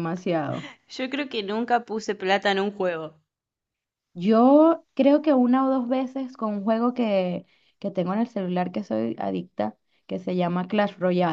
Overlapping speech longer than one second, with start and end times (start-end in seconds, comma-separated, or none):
none